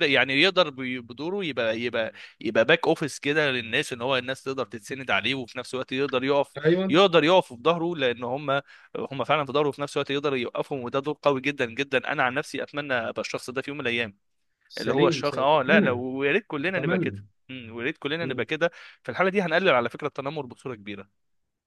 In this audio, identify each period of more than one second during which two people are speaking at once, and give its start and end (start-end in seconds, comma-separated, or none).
14.8-16.0